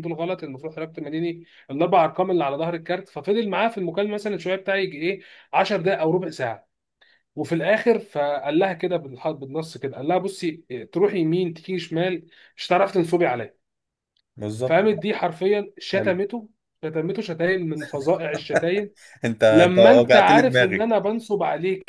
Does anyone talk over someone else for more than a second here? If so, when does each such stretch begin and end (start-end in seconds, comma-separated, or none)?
19.5-20.9